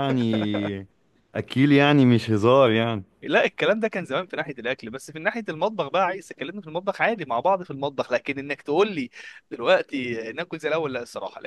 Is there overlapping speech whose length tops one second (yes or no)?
no